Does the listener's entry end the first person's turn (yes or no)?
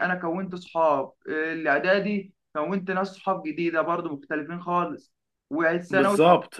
no